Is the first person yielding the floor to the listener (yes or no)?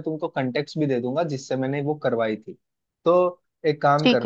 no